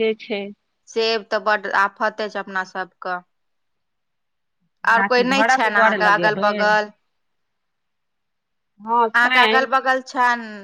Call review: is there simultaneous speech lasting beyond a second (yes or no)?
yes